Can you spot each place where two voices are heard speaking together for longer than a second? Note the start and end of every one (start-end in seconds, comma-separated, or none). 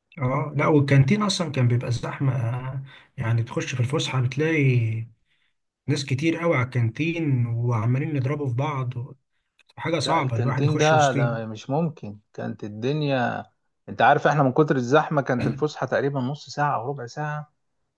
10.0-11.4